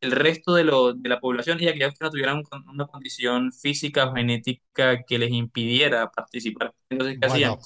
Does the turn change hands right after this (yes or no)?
yes